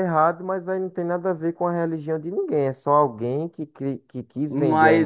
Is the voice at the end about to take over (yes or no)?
yes